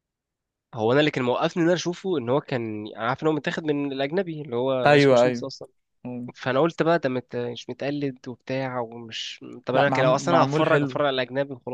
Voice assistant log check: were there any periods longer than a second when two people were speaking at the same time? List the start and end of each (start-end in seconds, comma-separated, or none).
9.7-11.0